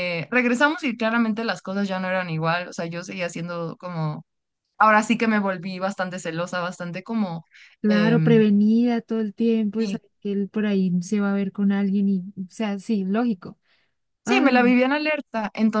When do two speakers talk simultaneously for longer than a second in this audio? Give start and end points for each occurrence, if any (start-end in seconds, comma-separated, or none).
none